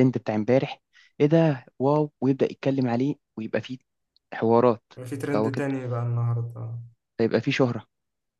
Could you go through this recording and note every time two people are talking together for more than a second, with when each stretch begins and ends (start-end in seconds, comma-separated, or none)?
none